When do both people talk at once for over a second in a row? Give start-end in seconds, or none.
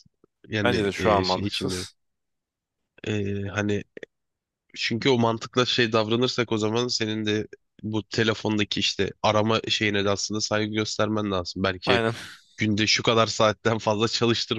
0.6-1.9